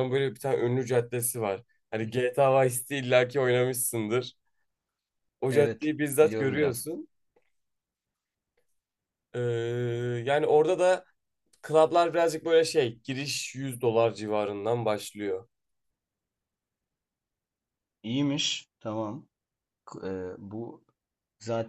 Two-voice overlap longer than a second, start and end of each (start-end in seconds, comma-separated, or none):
5.5-6.8